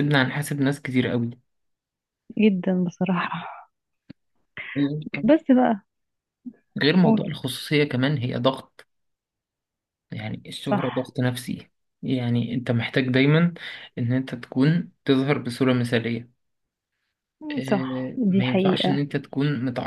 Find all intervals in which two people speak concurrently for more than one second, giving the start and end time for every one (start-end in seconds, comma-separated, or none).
17.7-19.0